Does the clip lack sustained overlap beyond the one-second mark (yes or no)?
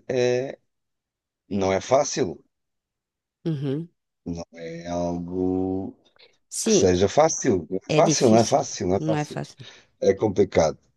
no